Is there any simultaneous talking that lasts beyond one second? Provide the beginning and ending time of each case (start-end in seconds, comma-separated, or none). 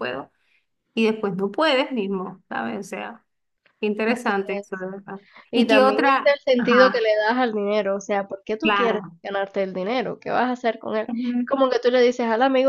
5.5-7.1